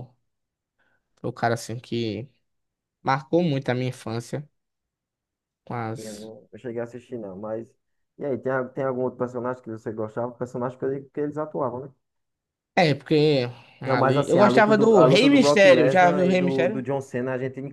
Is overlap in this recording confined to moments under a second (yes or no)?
no